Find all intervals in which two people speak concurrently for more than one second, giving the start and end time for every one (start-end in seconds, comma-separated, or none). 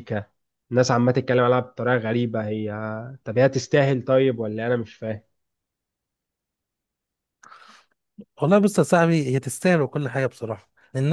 none